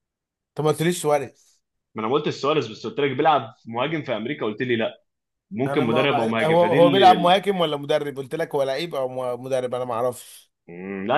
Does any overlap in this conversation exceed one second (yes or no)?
yes